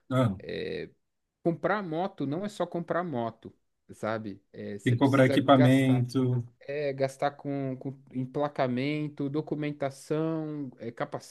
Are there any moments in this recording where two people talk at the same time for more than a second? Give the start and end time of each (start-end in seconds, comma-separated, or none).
4.8-6.1